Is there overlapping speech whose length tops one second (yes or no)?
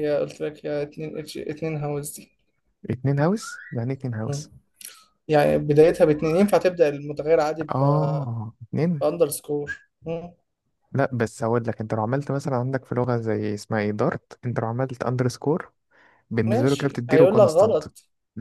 yes